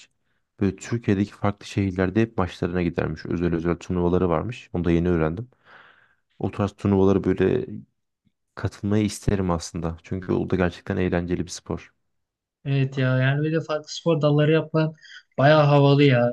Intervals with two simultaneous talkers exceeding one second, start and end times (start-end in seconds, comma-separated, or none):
none